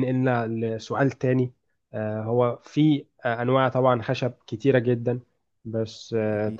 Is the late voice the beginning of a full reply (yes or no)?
no